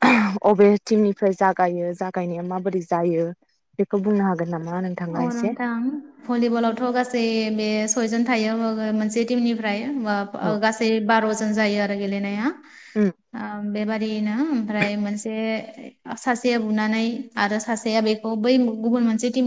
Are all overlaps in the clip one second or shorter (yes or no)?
yes